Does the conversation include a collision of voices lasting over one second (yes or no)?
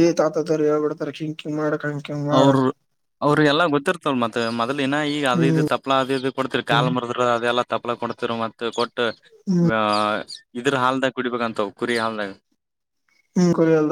no